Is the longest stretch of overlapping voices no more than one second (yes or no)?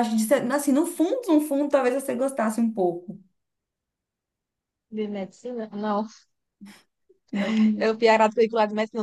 yes